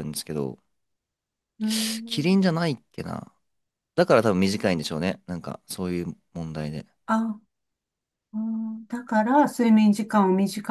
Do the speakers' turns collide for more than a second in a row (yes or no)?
no